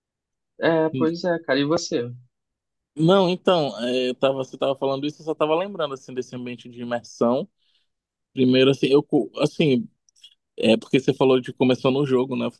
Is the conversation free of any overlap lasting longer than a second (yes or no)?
yes